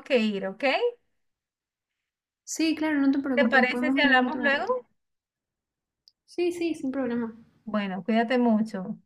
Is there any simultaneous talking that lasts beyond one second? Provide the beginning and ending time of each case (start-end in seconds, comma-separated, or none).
3.4-4.7